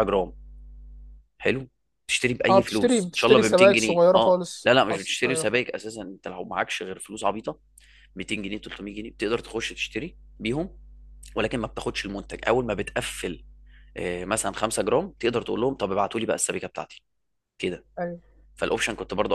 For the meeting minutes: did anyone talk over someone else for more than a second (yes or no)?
yes